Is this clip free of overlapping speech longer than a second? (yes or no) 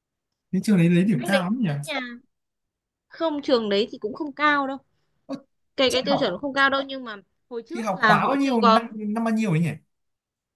no